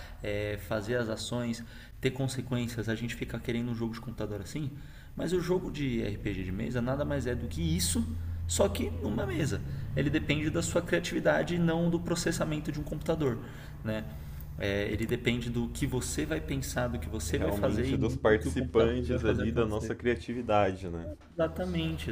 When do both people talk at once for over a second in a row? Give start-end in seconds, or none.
17.3-19.9